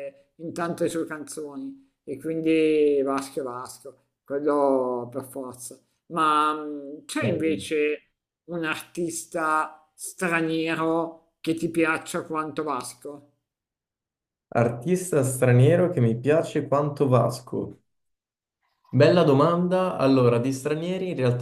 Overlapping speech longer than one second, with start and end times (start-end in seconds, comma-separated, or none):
none